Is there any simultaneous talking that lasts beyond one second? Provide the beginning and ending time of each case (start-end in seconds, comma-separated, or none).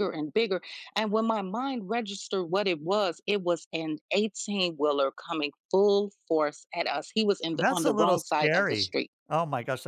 7.6-9.1